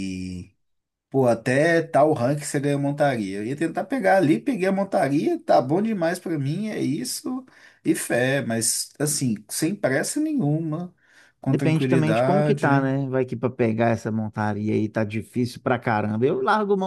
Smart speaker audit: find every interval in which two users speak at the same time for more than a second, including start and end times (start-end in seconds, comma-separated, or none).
11.4-12.8